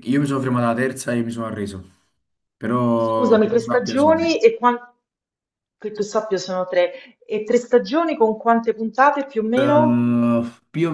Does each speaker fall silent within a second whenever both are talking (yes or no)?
no